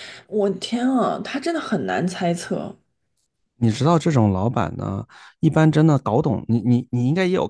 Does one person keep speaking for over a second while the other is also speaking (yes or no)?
no